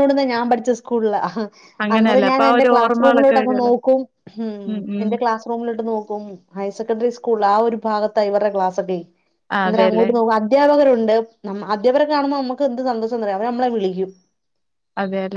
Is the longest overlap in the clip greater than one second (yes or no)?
yes